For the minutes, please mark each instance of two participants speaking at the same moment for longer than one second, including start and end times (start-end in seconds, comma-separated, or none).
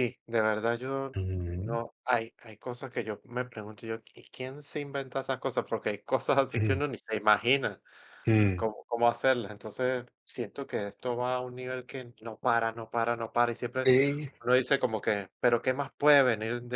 none